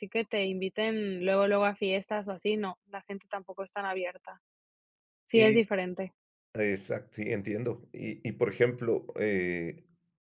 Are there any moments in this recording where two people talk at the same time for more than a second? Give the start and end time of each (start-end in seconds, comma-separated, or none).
none